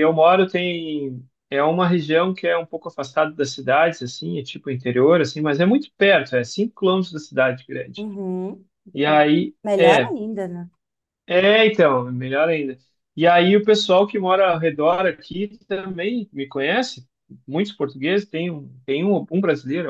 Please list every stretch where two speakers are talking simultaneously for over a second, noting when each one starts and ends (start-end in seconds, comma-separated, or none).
none